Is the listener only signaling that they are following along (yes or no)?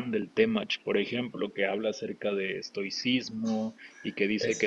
yes